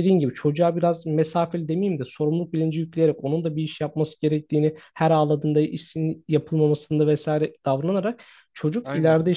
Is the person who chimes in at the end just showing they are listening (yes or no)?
yes